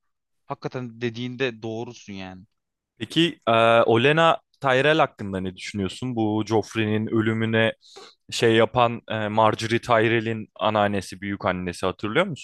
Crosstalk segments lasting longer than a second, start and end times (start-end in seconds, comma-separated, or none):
none